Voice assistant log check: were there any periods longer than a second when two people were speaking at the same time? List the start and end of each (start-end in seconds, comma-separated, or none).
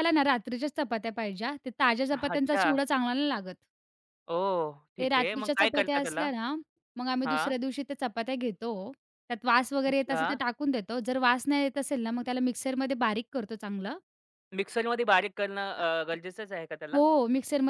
5.0-6.3